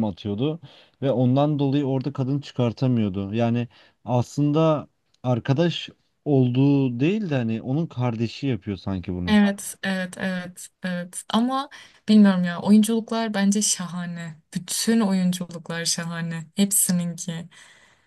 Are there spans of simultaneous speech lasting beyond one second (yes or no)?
no